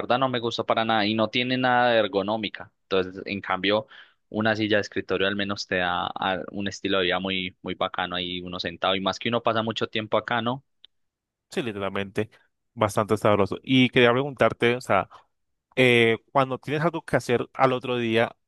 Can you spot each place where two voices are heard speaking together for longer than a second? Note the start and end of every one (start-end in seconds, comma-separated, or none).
none